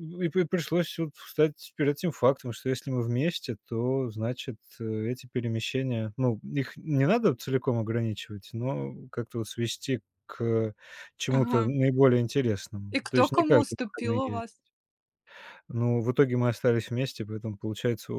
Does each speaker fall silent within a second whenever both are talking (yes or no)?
no